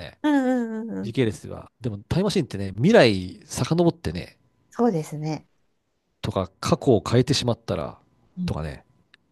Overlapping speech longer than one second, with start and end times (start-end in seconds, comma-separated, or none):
none